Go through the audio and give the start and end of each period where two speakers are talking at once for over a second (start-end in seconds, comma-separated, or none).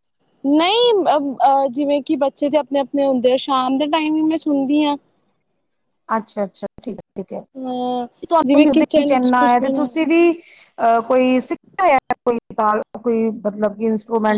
8.5-9.9